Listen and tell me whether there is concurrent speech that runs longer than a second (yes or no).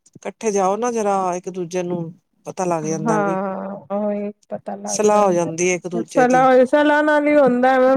no